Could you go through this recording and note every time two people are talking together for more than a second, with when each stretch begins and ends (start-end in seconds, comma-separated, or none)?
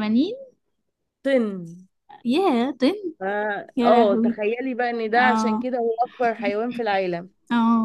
none